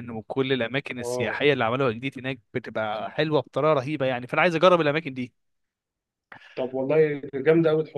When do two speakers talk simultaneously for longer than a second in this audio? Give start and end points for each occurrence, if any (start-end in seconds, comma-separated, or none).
none